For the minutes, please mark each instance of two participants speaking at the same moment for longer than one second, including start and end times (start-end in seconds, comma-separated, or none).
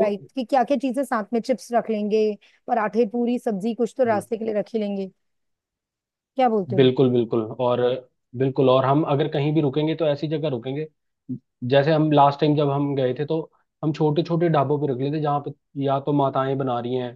none